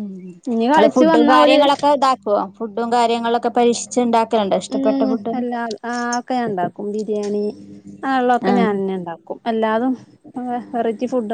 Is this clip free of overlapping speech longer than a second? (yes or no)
yes